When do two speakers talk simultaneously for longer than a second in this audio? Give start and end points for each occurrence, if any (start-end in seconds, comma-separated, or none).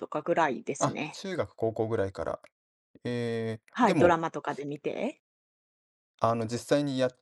none